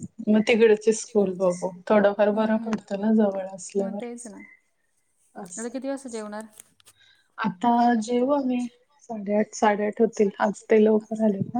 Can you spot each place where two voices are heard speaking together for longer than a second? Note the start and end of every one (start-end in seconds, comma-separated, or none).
none